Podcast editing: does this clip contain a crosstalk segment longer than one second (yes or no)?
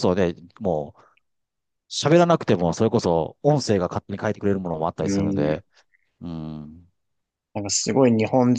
no